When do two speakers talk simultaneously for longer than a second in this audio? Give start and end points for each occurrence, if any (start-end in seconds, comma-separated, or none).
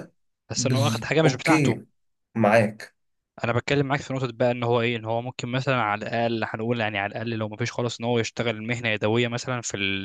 0.6-1.8